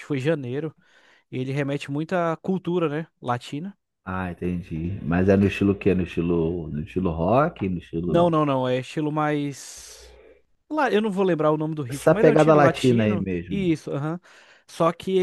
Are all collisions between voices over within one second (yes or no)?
no